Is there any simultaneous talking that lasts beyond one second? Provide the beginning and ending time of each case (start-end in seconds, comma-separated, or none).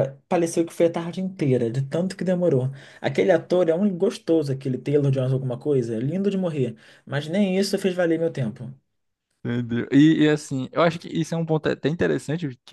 none